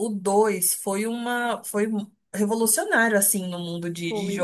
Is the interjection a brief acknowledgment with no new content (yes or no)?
no